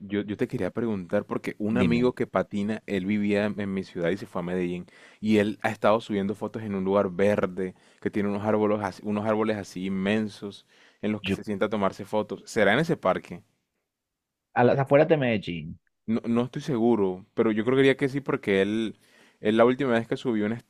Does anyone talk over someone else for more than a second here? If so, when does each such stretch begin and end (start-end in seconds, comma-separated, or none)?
none